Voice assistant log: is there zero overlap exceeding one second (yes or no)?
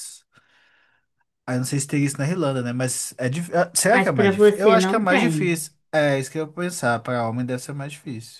no